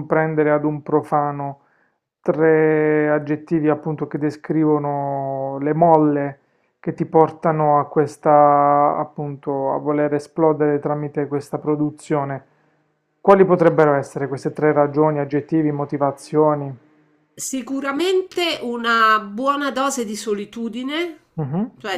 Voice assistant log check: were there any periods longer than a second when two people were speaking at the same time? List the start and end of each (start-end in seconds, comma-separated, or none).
none